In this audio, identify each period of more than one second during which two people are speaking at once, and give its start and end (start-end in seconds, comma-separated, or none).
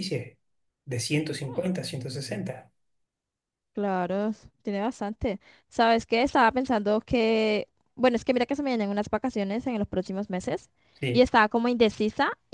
none